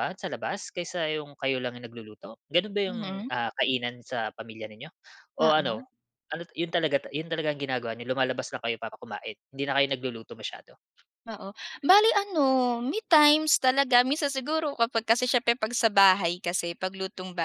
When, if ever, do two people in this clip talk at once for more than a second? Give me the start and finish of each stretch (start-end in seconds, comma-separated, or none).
none